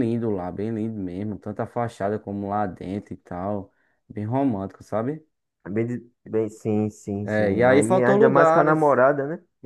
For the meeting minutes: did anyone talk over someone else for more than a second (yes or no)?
yes